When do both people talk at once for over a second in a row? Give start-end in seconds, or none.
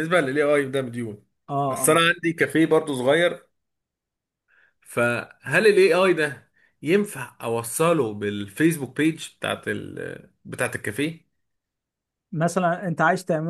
none